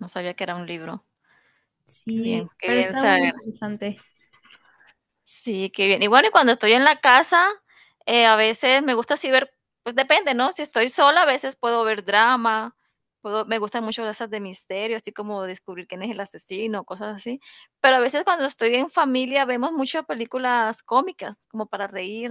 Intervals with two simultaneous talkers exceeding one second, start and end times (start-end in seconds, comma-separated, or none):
2.1-3.3